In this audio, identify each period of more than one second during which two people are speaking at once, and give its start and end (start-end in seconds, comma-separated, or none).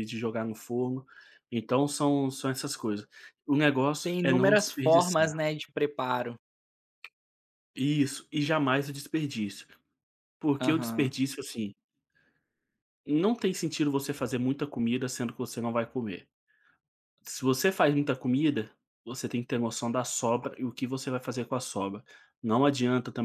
4.0-5.4